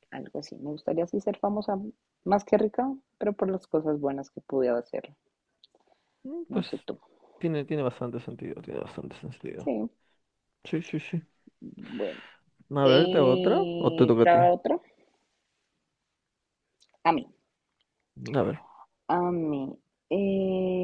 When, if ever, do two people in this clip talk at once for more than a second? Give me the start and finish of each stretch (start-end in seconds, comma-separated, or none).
12.8-14.4